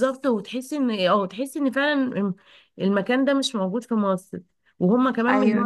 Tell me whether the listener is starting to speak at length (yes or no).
no